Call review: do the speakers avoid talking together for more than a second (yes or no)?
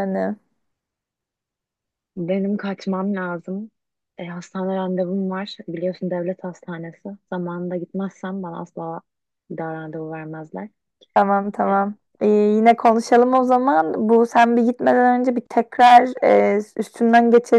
yes